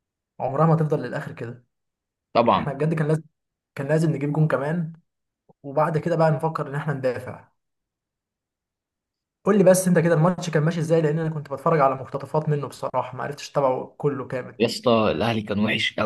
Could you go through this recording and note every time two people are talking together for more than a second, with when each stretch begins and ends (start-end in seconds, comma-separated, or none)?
none